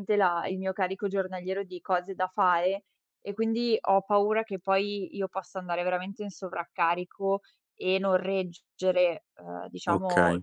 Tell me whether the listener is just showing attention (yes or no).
yes